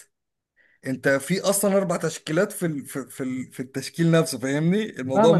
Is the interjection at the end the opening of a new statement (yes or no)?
yes